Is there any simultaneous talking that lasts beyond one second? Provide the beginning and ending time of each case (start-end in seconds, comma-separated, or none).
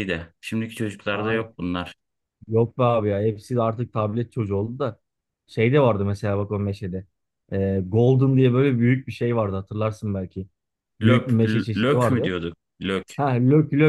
11.0-12.3